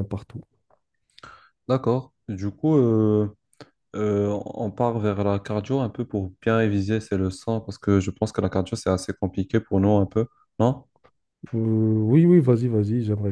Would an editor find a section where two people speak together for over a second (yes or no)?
no